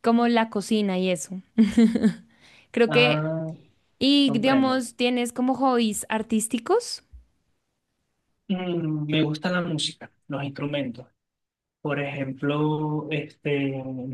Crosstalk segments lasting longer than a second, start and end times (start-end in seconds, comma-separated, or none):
none